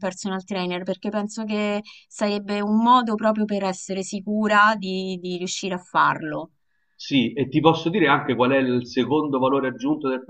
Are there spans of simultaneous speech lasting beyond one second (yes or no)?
no